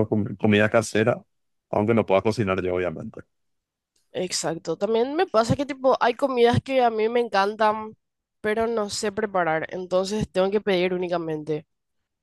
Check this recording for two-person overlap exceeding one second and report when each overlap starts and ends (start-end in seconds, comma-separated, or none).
none